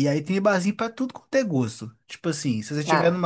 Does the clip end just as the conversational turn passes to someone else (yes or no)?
no